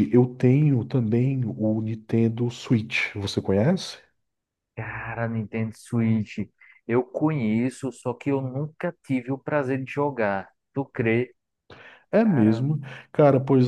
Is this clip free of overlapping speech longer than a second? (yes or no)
yes